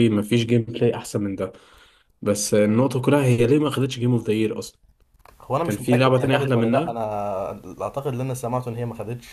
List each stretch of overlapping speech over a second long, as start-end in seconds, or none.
5.6-7.0